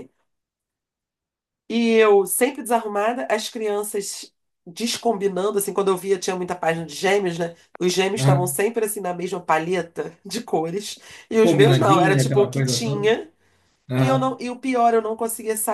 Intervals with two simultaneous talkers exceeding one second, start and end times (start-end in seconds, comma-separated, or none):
11.4-13.1